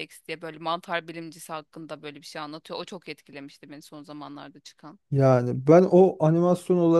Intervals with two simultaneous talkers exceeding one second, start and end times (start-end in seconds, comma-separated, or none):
none